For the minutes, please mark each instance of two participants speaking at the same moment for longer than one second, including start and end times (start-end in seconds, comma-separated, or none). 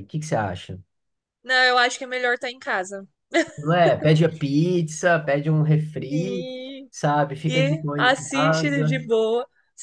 7.5-9.0